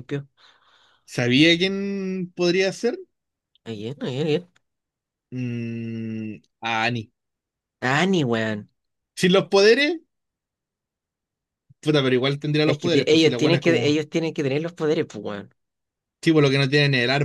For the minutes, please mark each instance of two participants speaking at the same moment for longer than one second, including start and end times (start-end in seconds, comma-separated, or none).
12.6-14.0